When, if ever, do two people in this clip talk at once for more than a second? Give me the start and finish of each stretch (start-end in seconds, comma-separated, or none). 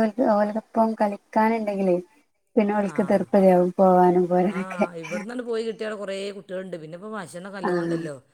none